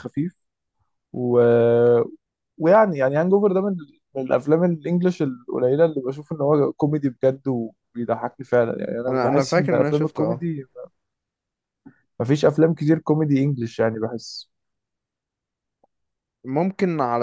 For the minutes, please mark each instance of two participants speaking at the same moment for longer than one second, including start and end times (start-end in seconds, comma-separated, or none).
9.1-10.4